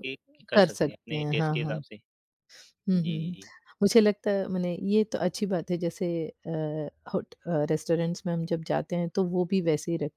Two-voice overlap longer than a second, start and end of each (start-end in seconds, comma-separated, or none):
0.5-1.8